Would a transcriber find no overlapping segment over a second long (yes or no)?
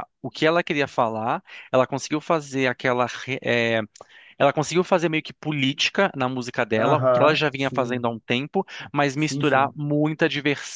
no